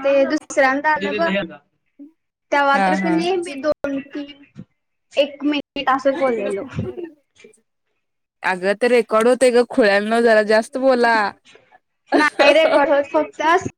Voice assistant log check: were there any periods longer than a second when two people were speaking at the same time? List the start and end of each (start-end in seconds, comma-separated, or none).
none